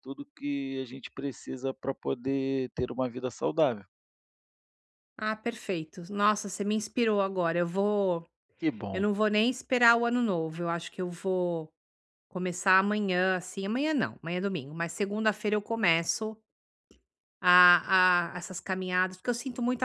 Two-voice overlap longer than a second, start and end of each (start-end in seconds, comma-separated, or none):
none